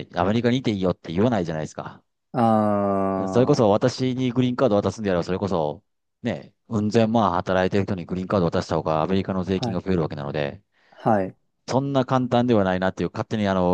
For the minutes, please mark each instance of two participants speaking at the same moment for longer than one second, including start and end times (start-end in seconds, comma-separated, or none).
none